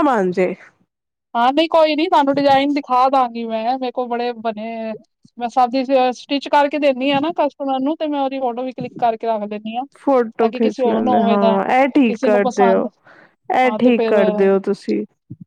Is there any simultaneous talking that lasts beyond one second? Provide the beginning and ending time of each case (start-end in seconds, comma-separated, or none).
10.0-11.4